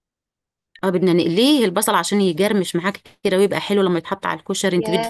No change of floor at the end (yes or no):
no